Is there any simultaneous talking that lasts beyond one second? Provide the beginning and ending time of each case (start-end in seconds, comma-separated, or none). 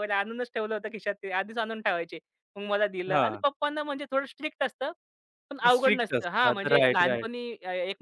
5.7-7.3